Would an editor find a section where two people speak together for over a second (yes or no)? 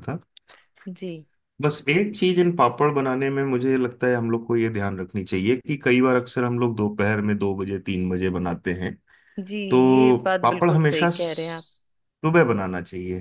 yes